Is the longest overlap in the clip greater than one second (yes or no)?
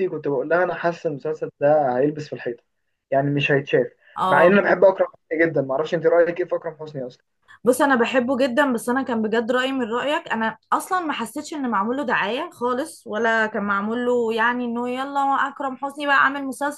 no